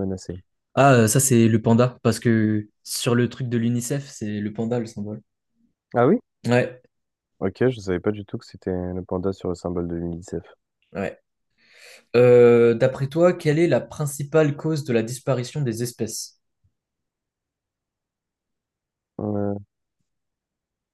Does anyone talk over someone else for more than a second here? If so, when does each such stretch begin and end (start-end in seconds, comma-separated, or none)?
none